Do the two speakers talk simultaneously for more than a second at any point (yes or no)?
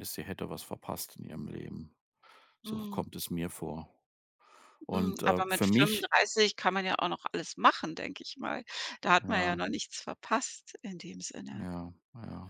yes